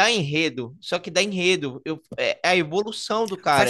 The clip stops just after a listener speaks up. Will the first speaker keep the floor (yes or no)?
no